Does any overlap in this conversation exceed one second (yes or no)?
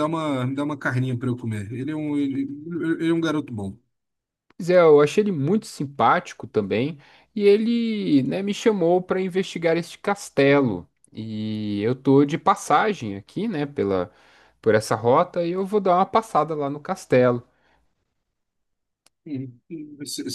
no